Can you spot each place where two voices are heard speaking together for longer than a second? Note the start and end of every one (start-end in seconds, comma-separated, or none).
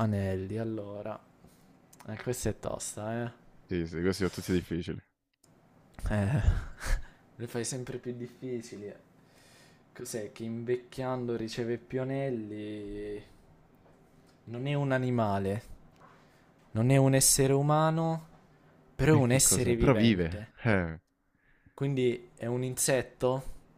19.2-20.5